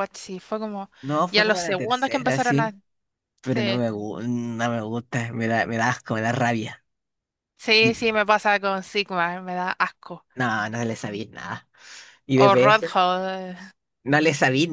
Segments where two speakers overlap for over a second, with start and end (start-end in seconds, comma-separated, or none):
1.3-2.7